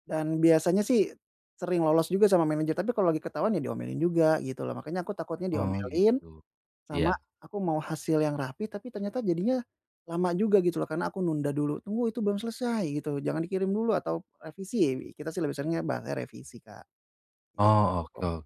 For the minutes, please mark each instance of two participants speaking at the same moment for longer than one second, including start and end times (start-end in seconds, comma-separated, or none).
none